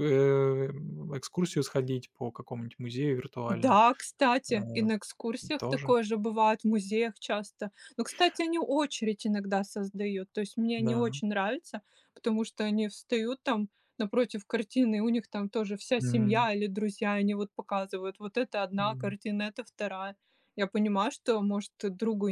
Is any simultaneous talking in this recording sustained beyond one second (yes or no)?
no